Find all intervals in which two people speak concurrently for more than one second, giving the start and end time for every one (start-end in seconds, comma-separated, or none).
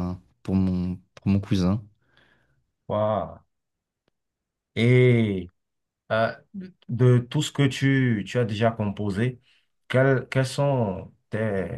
none